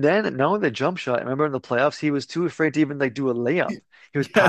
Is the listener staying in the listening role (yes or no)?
no